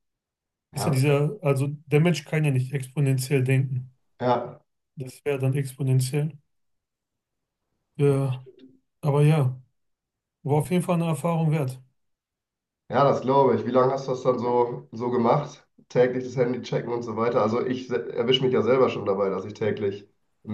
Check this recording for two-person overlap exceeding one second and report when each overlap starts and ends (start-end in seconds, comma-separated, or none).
none